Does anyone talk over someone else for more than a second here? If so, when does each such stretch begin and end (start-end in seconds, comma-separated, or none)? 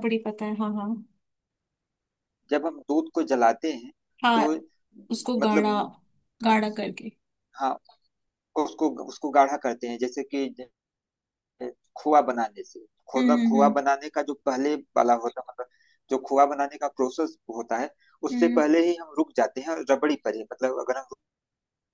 none